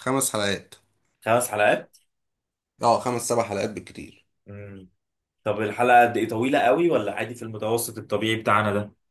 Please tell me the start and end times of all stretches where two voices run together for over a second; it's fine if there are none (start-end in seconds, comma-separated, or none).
none